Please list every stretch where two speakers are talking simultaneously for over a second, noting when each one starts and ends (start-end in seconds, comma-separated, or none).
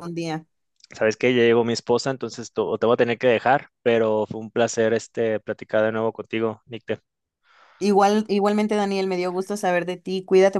none